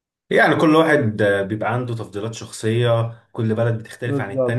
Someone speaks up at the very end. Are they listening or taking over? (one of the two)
listening